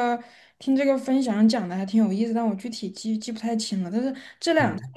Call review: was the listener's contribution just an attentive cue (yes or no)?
yes